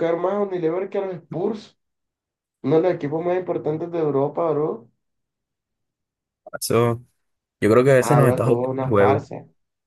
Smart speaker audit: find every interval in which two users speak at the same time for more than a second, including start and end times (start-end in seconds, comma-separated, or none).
8.0-9.3